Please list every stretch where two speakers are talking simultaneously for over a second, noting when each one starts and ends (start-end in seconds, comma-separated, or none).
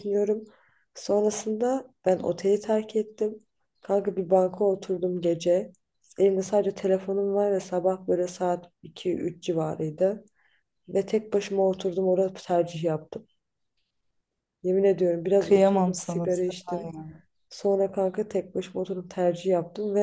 15.4-16.9